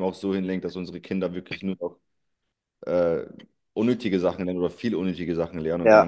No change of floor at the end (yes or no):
no